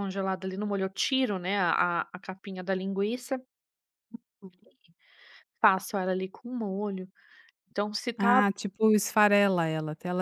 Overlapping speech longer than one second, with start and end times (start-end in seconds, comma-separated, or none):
none